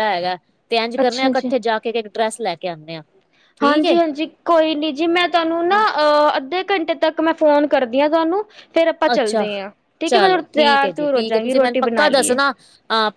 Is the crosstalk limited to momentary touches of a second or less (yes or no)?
no